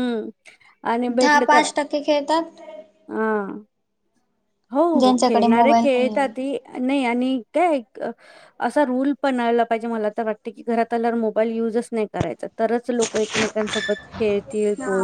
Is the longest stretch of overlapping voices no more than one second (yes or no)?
no